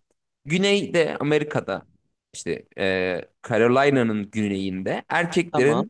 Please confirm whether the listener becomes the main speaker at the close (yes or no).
no